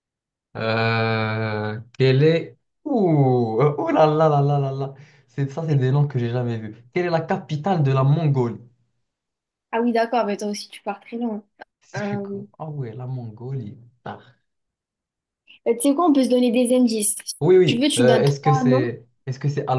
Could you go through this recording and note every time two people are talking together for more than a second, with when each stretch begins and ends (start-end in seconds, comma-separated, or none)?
17.4-18.9